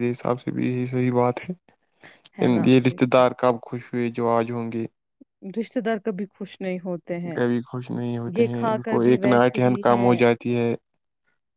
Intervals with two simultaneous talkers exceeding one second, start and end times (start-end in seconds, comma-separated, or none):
8.4-10.2